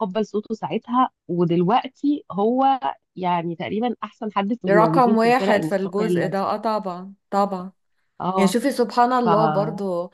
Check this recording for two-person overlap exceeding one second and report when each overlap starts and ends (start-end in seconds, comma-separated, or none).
4.6-6.4